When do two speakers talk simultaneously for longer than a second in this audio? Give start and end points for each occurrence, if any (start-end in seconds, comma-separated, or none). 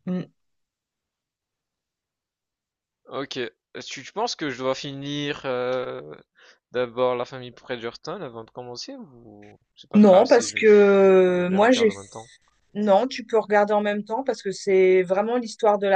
9.9-12.3